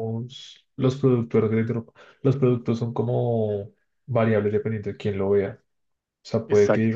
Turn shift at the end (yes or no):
no